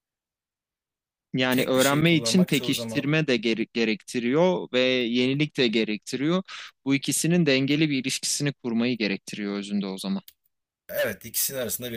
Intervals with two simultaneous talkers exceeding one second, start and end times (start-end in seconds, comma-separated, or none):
1.5-3.1